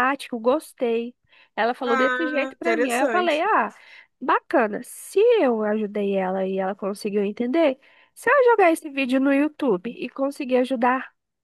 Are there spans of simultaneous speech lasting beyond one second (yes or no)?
yes